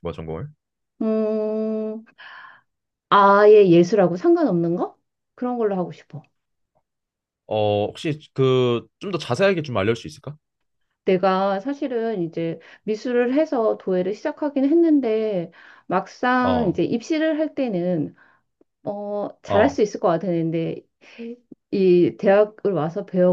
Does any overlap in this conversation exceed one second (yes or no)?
no